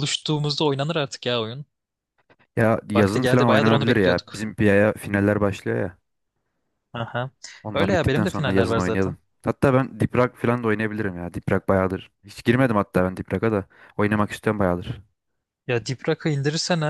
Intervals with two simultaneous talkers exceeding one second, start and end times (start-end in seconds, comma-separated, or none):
3.0-4.5, 7.7-9.2